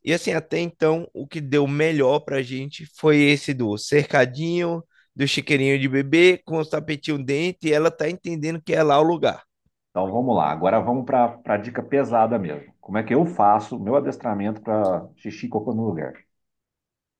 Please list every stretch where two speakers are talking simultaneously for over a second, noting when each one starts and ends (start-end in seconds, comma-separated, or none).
none